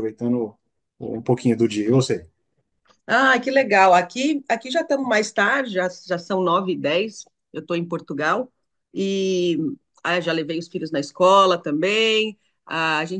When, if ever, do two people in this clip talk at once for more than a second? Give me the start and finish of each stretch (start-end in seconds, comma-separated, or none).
none